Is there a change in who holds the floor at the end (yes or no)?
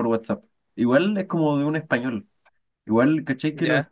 no